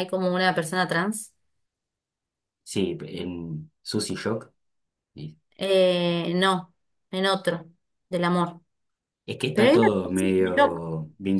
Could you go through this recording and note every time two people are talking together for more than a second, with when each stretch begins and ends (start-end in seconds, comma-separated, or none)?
9.5-10.8